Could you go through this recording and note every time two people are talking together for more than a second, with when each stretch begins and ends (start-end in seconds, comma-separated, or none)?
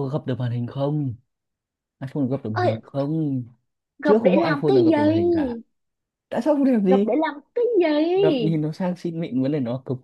4.0-5.6